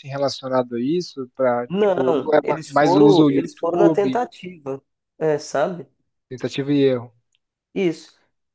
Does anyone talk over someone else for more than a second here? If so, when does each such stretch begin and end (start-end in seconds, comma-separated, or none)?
1.7-4.2